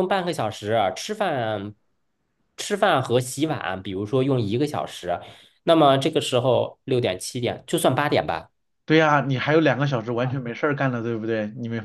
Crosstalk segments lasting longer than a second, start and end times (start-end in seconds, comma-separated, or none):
none